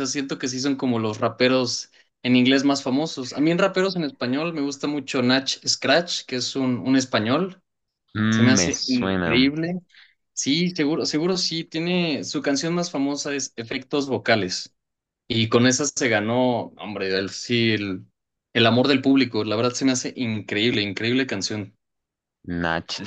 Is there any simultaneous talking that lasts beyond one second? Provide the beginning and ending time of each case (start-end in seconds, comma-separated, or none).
8.3-9.5